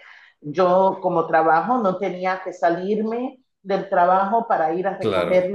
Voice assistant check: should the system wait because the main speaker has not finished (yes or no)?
yes